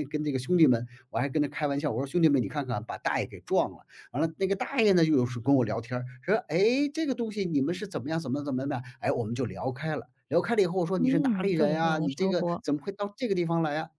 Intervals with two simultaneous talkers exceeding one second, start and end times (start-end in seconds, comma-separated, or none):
11.0-12.6